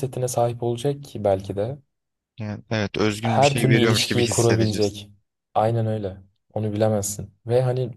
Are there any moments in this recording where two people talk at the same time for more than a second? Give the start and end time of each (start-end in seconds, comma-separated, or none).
3.2-5.0